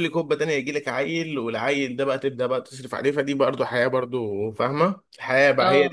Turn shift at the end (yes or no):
no